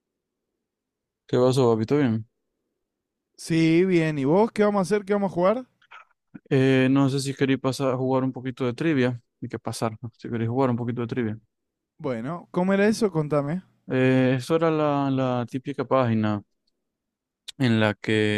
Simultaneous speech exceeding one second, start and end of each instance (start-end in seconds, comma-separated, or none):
none